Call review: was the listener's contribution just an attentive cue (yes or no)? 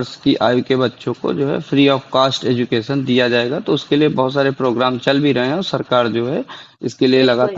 no